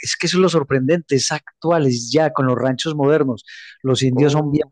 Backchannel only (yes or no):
yes